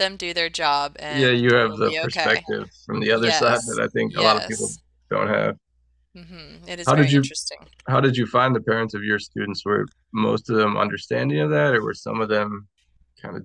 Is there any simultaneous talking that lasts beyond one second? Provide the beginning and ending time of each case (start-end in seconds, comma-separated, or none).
1.1-2.5, 3.1-4.8